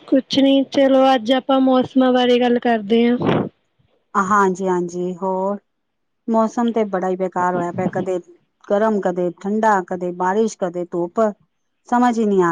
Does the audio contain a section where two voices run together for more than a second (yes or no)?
no